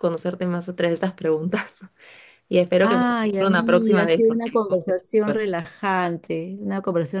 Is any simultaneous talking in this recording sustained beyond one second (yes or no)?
yes